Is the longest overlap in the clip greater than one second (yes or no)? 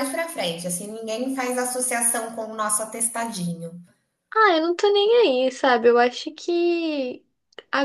no